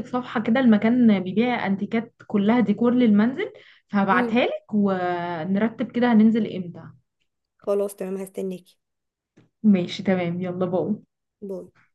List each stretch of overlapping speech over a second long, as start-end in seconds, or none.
none